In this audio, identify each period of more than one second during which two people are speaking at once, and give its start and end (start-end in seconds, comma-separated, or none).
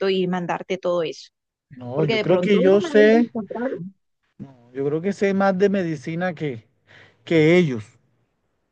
1.9-3.2